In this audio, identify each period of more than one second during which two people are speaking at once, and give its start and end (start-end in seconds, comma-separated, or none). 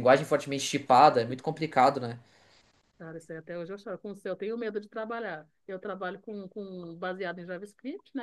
none